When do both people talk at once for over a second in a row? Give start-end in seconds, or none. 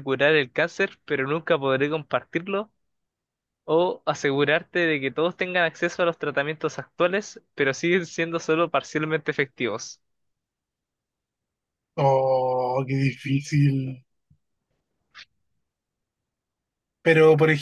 none